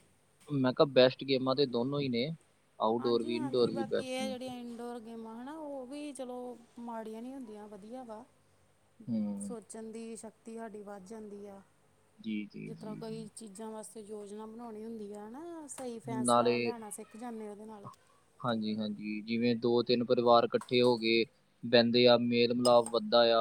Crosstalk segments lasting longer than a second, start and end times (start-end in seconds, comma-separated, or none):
3.0-4.3